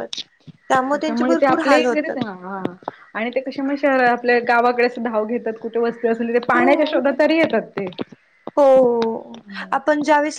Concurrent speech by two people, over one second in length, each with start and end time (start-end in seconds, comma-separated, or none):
0.9-2.2